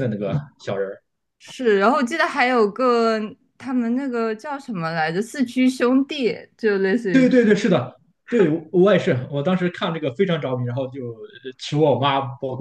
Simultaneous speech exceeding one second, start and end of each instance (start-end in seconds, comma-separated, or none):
none